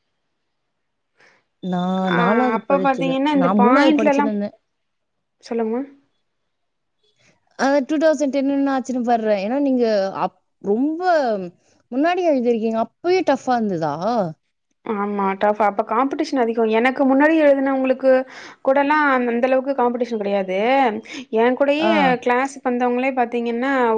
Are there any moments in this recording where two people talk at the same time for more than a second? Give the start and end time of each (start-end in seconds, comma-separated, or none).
2.2-4.3